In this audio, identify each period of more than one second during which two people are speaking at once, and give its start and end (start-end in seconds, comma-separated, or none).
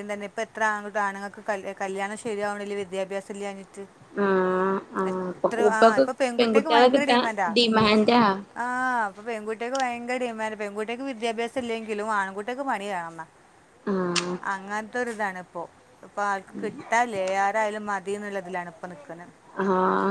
5.1-7.5